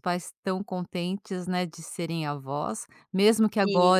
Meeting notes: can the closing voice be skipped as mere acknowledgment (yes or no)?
yes